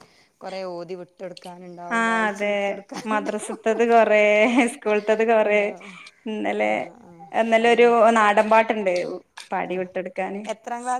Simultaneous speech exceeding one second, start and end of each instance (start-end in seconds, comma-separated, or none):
none